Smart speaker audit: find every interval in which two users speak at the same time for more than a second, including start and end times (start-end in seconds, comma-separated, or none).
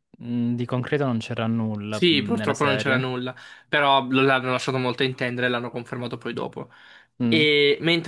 1.9-3.1